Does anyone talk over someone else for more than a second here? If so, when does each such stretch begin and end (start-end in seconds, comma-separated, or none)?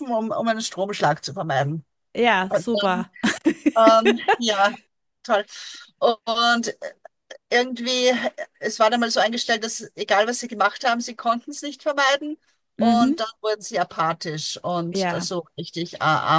none